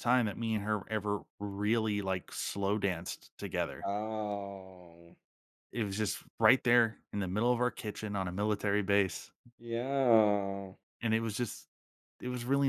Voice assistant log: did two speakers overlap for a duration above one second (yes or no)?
no